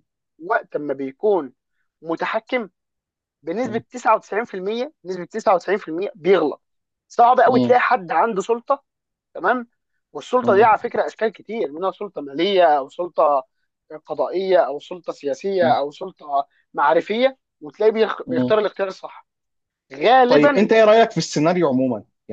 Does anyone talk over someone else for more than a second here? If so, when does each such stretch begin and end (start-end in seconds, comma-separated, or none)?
none